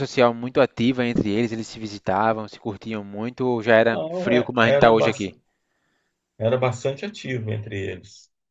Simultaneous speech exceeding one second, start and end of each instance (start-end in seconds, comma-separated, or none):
3.9-5.3